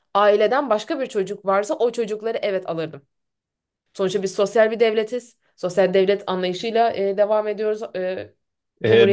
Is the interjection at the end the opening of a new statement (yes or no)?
yes